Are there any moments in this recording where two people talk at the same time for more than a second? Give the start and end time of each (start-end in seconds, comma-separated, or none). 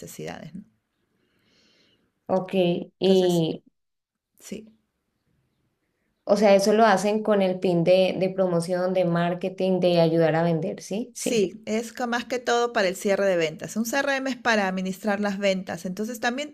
none